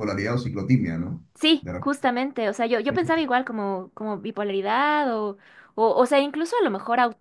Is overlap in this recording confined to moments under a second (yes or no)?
yes